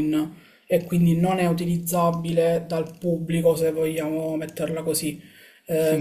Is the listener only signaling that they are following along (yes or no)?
no